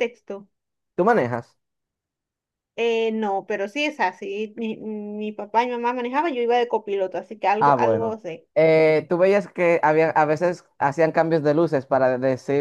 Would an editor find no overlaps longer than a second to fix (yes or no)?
yes